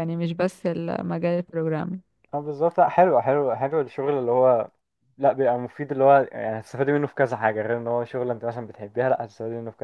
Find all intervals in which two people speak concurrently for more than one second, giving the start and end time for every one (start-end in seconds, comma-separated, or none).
none